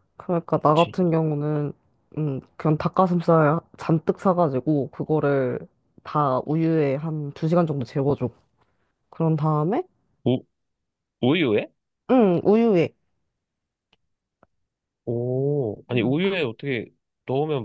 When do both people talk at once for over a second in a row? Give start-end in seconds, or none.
none